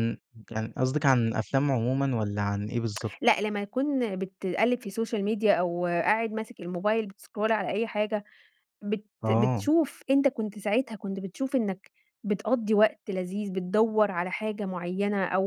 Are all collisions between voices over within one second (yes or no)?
yes